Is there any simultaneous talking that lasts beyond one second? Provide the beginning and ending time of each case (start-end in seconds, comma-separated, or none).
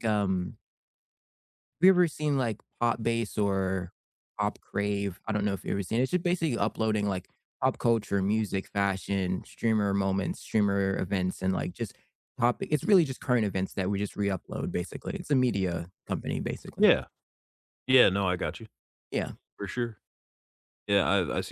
none